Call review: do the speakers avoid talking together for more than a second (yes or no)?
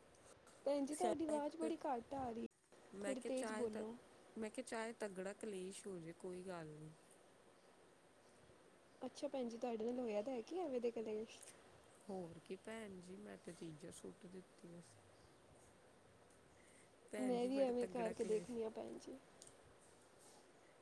no